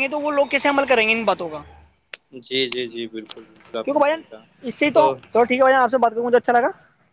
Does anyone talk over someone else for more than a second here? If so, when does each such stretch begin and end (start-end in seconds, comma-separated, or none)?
none